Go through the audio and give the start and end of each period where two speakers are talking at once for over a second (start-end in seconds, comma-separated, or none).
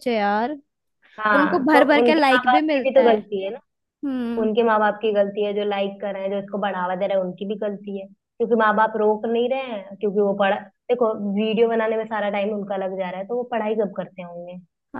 1.4-3.2